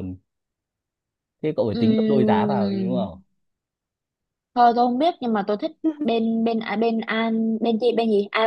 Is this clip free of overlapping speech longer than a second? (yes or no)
no